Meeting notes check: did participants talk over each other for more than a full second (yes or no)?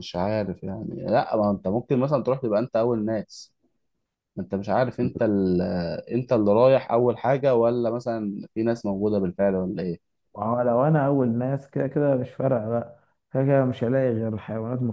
no